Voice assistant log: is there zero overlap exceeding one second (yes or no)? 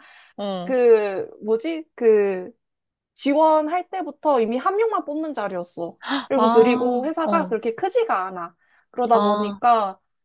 no